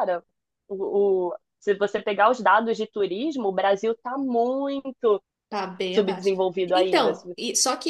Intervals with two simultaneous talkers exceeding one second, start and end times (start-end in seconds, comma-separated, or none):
5.9-7.4